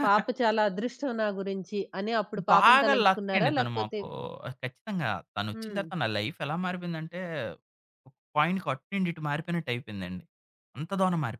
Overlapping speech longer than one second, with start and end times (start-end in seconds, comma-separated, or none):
2.5-4.0